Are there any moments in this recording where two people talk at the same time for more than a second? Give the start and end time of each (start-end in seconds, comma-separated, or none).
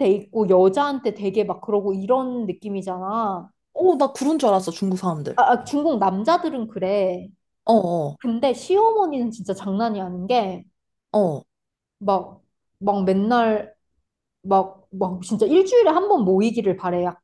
none